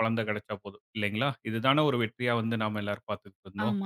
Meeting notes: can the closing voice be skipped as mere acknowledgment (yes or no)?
no